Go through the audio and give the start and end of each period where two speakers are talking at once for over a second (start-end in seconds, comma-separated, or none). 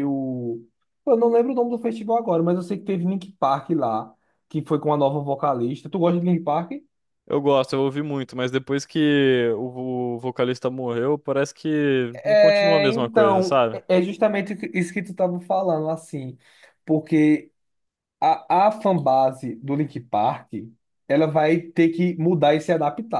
12.2-13.8